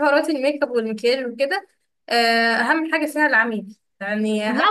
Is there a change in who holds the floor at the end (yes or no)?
yes